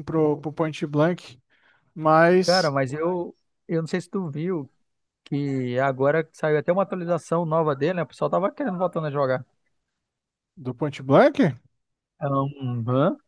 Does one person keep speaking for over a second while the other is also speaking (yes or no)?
no